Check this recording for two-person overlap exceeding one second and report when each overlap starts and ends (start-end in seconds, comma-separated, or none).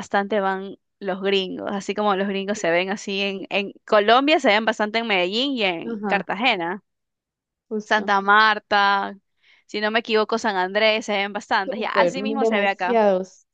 11.6-13.0